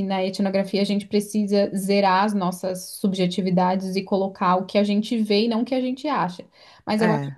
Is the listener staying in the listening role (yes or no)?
yes